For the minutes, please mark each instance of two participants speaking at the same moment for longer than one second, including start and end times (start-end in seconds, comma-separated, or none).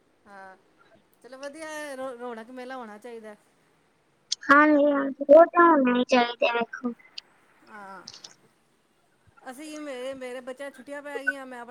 none